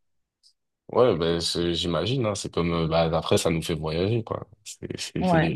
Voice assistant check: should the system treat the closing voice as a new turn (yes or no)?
no